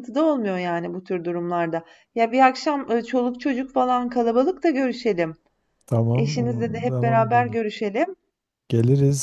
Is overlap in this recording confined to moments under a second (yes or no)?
no